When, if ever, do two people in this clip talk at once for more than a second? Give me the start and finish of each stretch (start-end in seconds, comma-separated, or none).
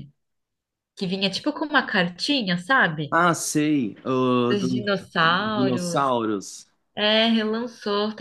4.5-6.1